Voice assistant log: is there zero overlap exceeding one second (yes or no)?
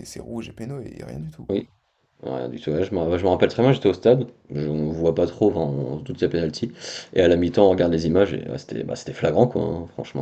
yes